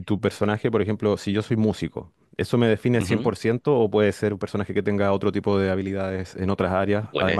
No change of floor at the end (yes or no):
no